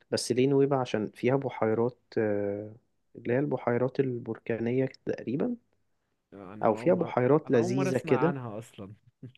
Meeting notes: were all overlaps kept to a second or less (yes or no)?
no